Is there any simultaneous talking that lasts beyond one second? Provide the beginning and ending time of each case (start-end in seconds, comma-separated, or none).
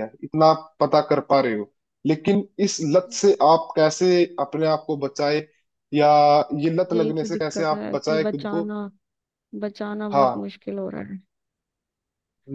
6.9-8.6